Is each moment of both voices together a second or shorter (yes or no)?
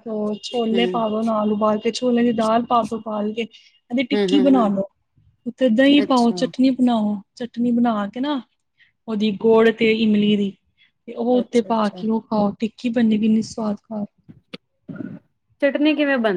yes